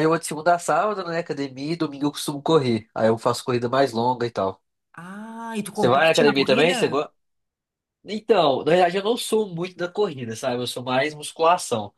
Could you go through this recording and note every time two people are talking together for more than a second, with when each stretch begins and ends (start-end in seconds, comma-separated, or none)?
5.7-7.1